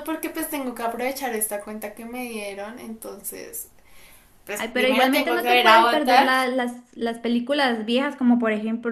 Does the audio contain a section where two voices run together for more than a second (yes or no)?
yes